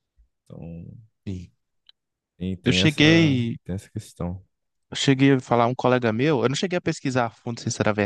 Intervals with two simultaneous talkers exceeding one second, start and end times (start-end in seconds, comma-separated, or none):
none